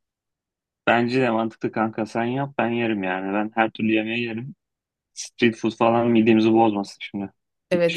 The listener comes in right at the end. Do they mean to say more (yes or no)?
yes